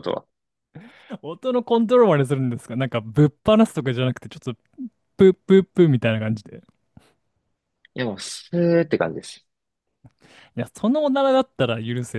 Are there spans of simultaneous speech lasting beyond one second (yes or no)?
no